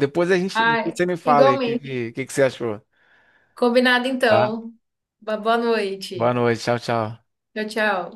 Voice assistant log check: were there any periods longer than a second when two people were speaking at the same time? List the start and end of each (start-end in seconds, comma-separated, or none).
0.5-2.0